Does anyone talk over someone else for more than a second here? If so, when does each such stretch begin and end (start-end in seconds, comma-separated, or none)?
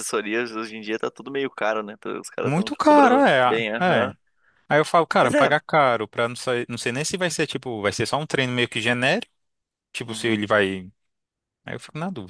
2.4-4.1